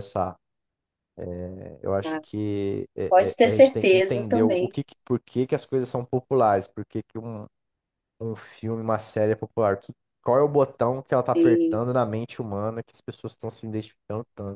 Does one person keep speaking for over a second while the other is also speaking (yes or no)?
yes